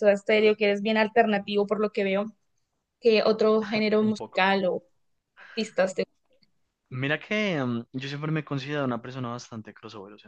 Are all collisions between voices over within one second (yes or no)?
yes